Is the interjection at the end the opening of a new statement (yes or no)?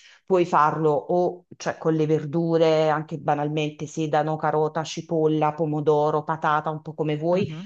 no